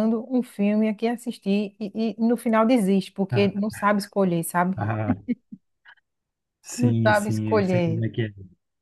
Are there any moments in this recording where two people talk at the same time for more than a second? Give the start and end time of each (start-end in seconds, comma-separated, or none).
6.8-8.0